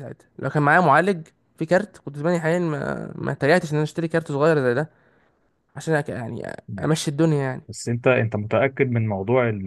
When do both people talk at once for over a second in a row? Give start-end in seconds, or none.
none